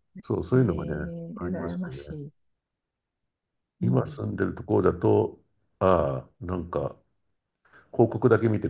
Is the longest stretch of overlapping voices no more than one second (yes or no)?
no